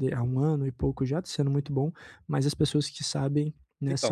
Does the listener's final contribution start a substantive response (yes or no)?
yes